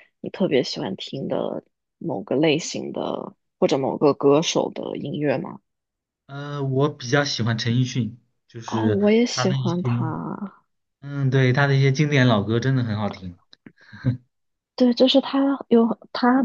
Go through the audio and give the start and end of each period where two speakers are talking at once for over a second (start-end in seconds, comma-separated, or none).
8.7-10.1